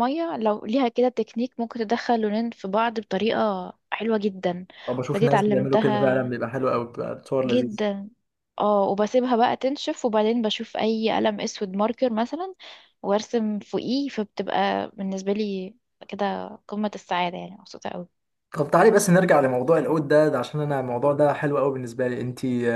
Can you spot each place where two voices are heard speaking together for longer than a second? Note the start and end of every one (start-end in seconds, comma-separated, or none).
5.1-6.3